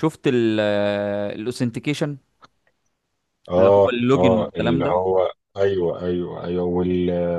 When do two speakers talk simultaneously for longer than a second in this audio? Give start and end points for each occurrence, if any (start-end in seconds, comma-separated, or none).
3.6-5.1